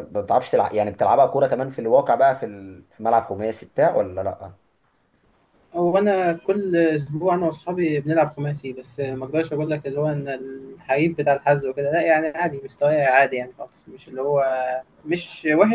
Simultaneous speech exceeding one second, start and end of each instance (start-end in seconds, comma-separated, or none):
none